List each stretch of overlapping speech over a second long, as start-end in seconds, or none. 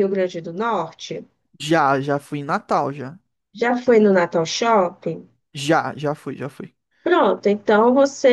none